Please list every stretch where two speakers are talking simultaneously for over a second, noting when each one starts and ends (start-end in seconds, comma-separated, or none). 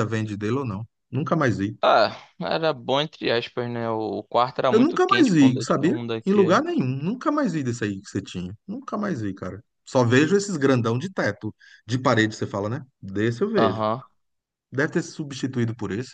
4.7-6.6